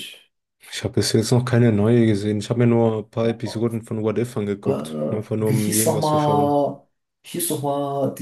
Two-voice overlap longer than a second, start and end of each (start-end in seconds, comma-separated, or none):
5.4-6.6